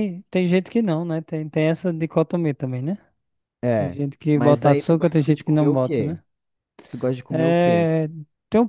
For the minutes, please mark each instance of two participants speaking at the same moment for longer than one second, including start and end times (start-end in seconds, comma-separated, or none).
3.7-6.2